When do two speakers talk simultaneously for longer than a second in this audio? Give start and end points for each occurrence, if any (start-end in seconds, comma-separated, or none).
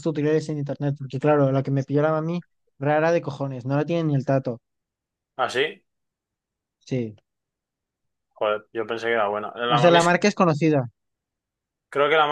none